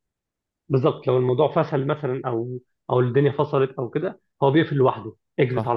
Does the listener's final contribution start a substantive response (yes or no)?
no